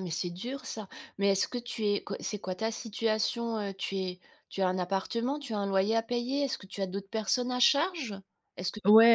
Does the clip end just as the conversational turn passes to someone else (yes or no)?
yes